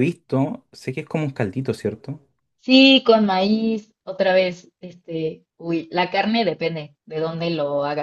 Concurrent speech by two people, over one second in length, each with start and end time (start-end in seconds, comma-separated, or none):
none